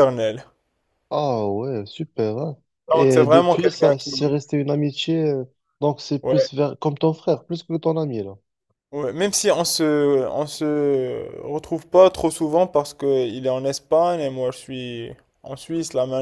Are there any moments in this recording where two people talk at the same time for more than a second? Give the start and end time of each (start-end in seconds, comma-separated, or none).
2.9-4.1